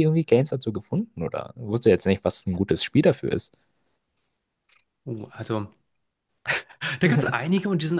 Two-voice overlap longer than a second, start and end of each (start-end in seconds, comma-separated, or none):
none